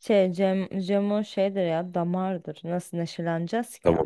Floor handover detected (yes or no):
yes